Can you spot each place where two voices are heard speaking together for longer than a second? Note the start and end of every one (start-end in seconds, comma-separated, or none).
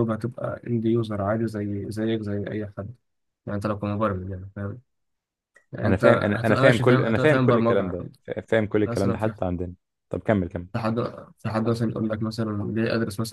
5.8-8.0